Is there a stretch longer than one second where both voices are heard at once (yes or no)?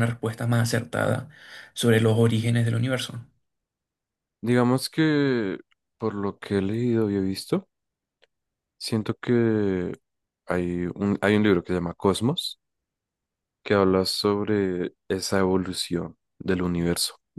no